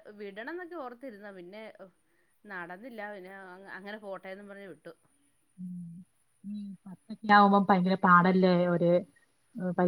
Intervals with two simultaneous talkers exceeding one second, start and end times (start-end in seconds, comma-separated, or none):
none